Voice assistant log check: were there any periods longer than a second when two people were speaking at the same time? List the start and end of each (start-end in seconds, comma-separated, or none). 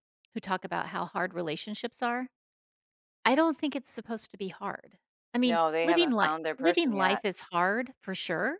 5.4-7.2